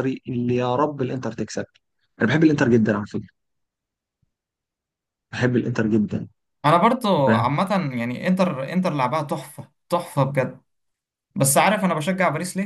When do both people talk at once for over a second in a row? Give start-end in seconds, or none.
none